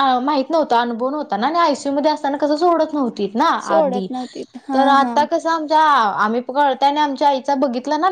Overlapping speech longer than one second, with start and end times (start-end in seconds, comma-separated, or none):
none